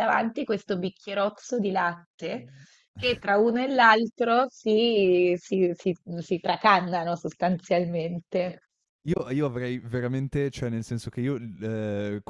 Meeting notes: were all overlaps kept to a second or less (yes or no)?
yes